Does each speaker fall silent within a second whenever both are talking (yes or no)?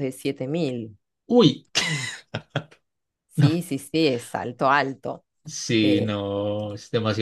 yes